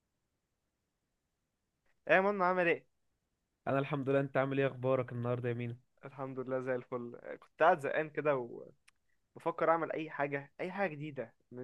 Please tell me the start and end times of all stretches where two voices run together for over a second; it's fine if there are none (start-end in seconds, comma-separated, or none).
none